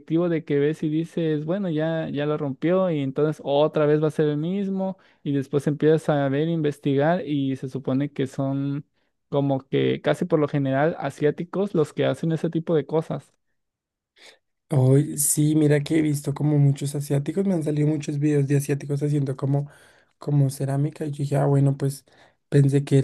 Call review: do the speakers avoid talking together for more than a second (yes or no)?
yes